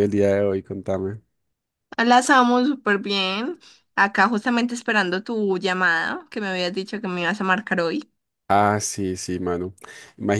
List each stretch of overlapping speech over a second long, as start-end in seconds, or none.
none